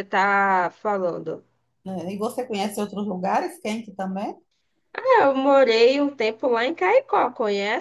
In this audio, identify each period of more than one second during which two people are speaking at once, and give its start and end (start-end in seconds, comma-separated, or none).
none